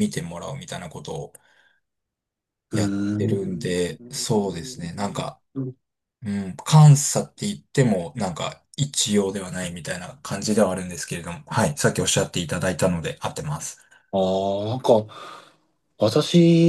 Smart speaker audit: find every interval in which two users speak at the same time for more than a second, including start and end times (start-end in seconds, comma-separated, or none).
2.7-4.4